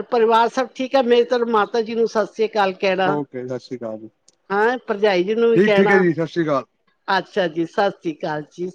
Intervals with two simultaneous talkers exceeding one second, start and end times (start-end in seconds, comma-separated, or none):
none